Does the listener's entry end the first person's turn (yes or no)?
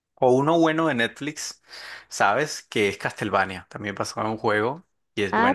yes